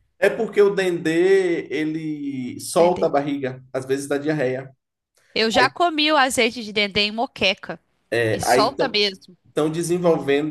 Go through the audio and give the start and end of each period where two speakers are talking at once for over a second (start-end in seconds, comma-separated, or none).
none